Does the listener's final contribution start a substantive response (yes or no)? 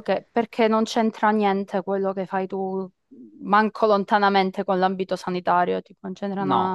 yes